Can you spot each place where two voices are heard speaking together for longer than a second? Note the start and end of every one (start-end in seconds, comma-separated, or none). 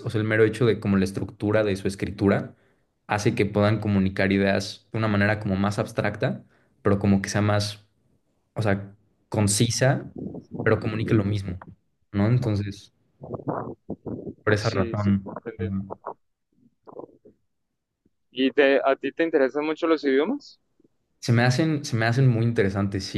14.6-16.0